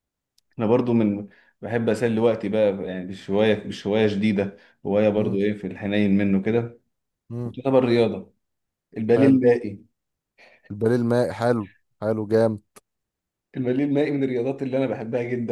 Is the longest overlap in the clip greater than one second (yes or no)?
no